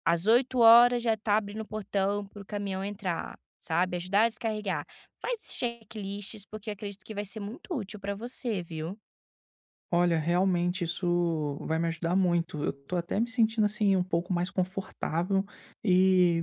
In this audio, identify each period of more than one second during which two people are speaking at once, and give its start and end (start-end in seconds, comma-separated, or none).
none